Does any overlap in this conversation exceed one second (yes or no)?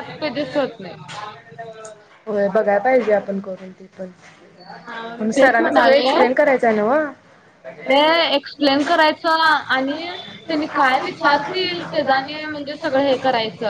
yes